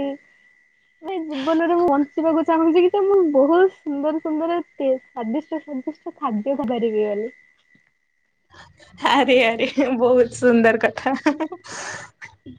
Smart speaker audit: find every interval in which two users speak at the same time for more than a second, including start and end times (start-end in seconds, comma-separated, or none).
none